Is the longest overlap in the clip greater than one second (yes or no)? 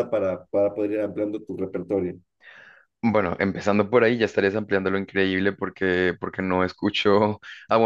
no